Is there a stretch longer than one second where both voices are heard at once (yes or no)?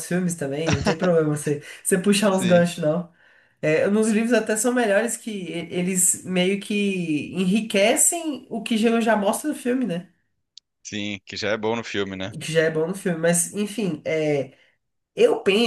no